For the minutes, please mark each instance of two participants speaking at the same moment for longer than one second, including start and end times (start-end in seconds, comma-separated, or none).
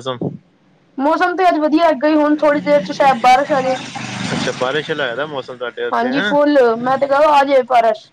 none